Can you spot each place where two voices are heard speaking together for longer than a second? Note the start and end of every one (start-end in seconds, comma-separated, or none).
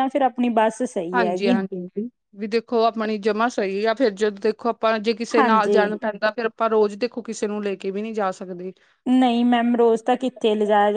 none